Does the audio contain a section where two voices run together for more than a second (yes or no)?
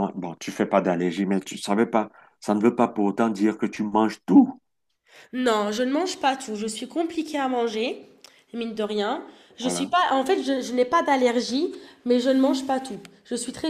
no